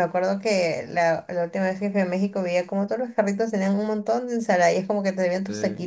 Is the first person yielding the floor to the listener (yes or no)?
no